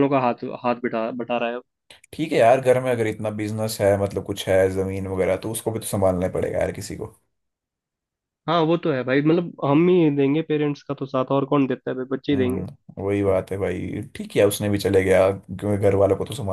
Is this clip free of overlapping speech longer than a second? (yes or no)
yes